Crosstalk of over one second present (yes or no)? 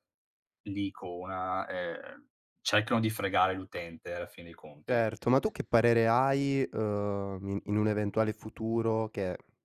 no